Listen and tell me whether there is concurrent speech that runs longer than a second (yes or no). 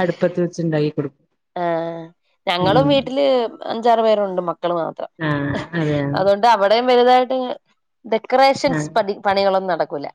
no